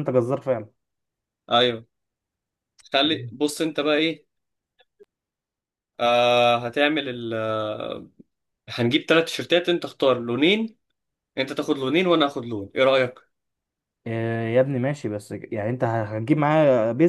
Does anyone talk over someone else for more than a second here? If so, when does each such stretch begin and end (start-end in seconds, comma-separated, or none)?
none